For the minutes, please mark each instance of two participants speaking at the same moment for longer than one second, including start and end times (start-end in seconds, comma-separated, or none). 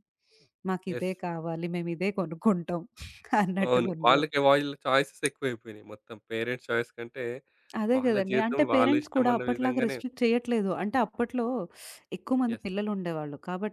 8.0-10.0